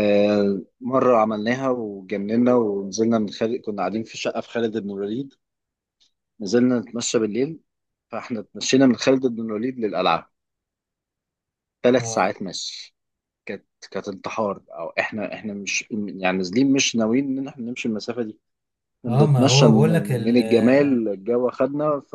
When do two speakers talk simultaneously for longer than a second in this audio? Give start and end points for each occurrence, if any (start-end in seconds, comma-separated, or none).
19.1-20.4